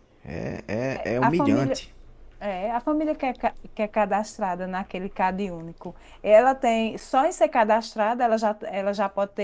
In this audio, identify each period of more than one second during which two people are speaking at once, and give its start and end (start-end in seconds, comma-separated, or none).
none